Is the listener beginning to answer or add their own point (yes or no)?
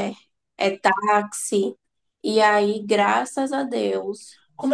yes